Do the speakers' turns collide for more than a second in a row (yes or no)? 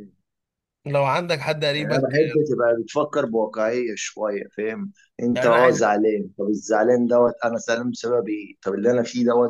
no